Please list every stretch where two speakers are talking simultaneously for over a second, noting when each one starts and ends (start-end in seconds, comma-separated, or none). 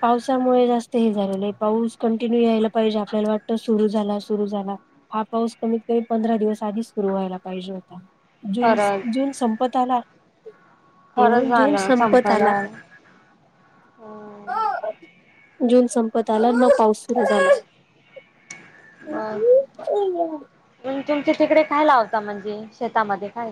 11.2-12.5